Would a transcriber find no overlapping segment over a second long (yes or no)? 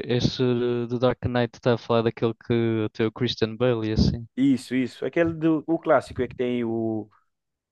yes